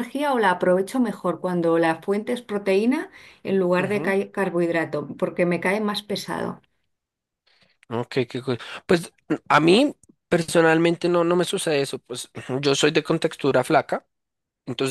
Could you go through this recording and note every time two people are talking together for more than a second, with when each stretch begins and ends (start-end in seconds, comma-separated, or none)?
none